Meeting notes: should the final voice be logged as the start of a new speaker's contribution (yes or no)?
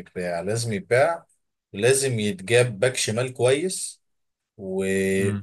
no